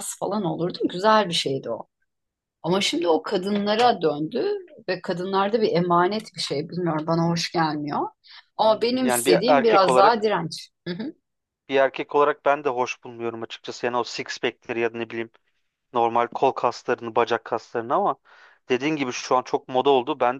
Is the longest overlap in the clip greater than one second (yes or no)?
yes